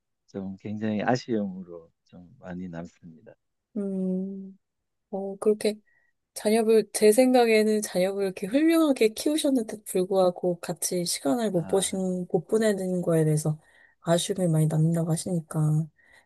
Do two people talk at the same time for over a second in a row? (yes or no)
no